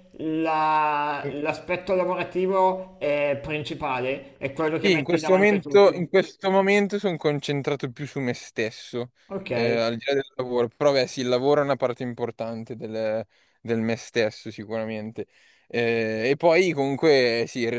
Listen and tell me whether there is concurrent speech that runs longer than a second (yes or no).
yes